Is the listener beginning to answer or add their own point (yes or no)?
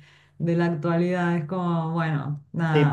yes